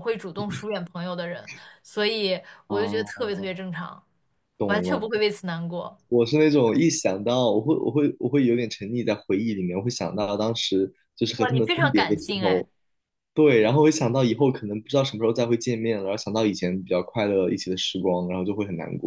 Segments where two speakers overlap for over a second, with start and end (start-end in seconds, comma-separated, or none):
11.3-12.6